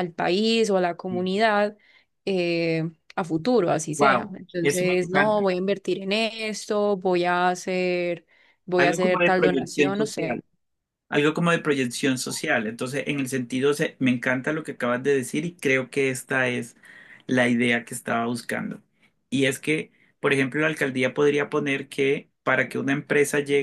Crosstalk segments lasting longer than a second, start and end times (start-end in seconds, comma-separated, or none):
4.0-5.4, 8.8-10.4